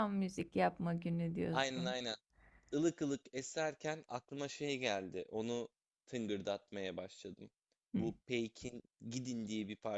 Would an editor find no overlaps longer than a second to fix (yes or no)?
yes